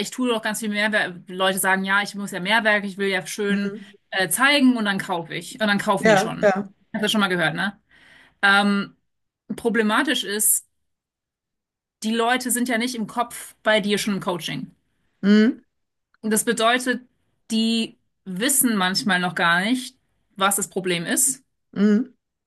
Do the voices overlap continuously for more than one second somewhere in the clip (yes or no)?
no